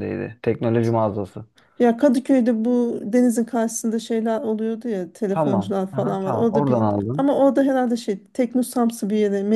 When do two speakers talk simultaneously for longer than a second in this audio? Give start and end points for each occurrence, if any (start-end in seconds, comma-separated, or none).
5.3-7.3